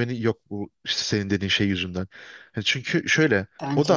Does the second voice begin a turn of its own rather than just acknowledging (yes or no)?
no